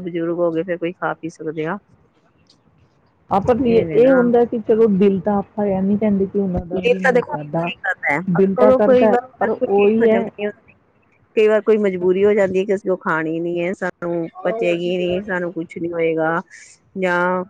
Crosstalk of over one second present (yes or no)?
yes